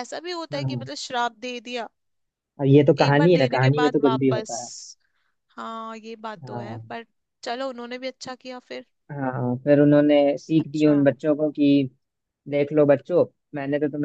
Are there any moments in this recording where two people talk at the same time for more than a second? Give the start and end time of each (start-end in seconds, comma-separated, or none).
3.0-4.5